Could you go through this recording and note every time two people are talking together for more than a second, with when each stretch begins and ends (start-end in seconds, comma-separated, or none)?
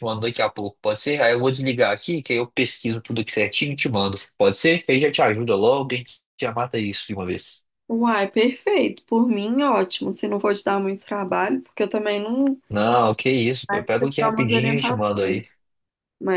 13.7-15.4